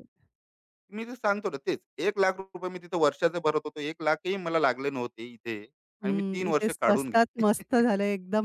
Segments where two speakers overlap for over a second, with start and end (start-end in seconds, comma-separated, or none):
6.0-7.9